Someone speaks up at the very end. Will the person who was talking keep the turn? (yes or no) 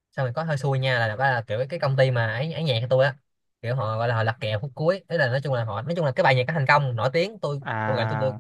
yes